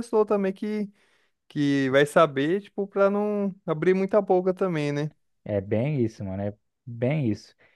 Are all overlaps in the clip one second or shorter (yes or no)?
yes